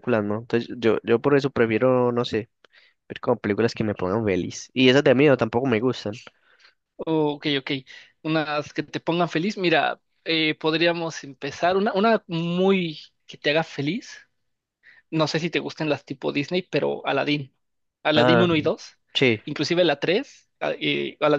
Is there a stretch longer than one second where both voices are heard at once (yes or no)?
no